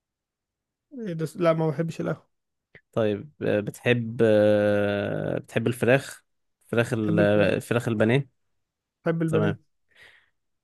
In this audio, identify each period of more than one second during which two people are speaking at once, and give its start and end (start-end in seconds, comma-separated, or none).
none